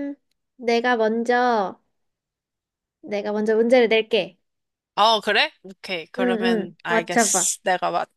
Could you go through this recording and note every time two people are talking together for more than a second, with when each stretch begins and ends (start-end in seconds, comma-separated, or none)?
6.2-7.5